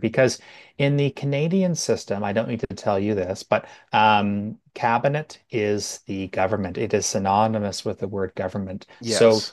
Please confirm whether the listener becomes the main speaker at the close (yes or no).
no